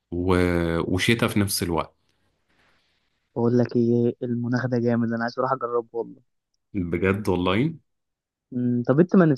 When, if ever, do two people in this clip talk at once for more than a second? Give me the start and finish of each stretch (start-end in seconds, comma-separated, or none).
none